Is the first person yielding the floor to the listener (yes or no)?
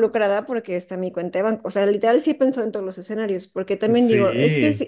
no